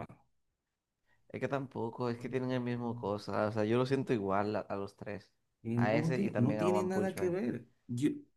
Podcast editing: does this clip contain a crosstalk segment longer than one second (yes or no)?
yes